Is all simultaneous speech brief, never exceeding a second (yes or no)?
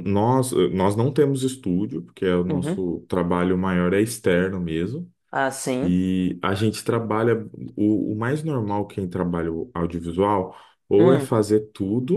yes